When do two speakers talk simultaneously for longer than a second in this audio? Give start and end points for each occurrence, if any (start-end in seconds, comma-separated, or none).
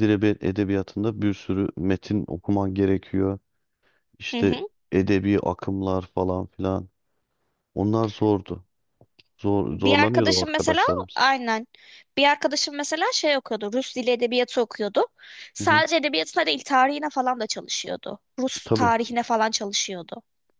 9.7-11.2